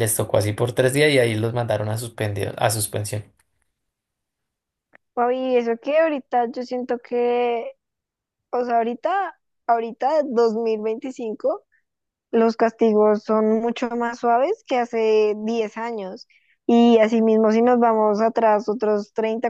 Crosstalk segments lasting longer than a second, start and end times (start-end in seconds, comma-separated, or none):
none